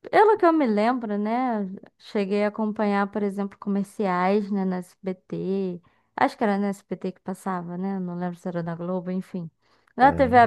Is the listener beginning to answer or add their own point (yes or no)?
no